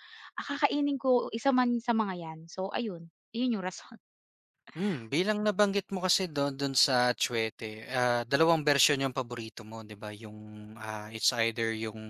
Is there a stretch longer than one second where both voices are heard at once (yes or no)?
no